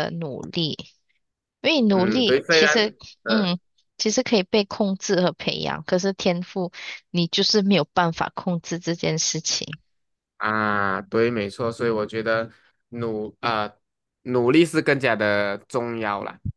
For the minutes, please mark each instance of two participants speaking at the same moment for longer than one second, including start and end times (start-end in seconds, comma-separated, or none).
1.9-3.5